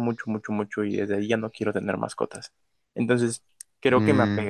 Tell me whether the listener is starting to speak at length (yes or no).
no